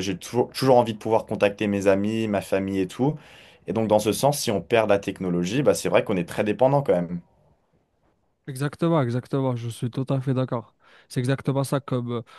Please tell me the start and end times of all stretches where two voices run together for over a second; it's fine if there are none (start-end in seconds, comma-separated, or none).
none